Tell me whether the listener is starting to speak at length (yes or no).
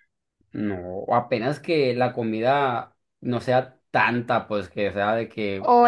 yes